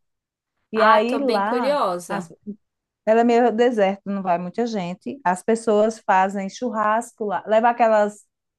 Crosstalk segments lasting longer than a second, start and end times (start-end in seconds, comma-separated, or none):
0.7-2.3